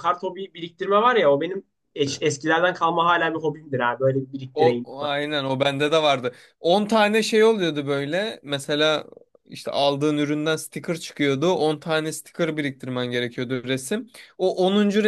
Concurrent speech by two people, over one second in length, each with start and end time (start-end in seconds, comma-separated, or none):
none